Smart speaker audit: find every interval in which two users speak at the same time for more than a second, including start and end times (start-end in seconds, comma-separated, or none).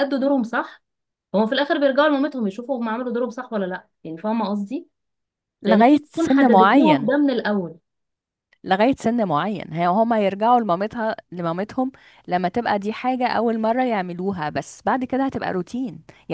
5.7-7.1